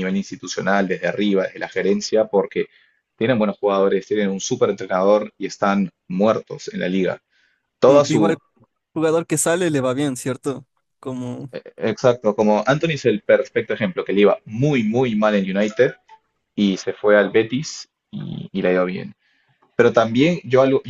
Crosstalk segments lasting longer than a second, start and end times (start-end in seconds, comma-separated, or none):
none